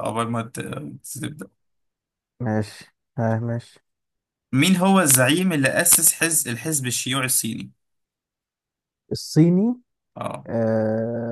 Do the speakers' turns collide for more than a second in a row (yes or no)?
no